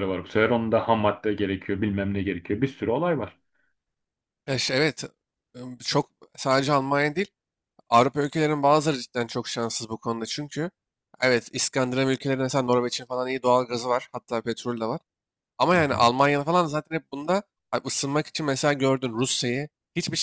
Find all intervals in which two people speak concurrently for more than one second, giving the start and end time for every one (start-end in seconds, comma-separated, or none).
none